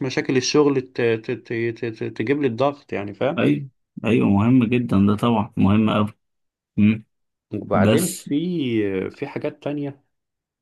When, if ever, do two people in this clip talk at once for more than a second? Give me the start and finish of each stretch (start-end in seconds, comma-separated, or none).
none